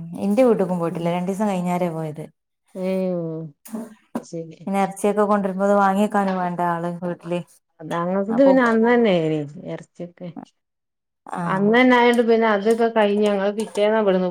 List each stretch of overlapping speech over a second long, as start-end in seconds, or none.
none